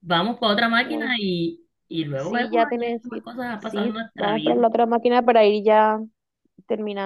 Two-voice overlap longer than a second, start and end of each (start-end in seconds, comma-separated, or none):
2.1-4.6